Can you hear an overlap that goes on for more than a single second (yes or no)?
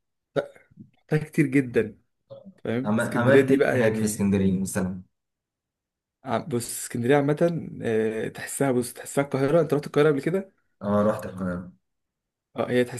yes